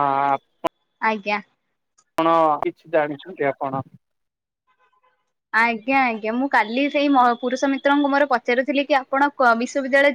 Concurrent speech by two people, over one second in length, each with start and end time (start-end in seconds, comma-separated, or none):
none